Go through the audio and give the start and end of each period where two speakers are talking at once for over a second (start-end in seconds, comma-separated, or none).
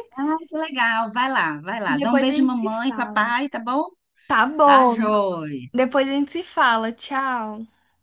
1.9-3.3